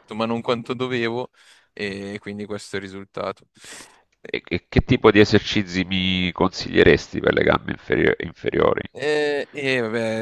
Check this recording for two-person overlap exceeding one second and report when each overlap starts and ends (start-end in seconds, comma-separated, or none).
none